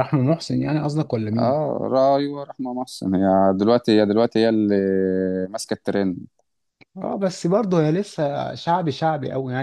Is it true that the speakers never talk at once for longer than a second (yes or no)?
yes